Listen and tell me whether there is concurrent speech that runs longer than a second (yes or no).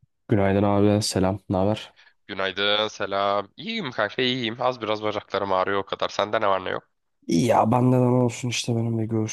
no